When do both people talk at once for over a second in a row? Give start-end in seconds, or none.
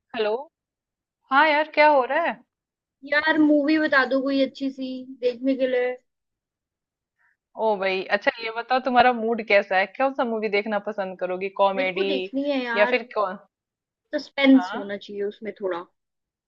none